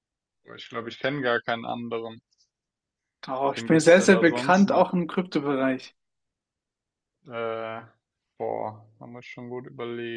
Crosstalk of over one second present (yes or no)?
yes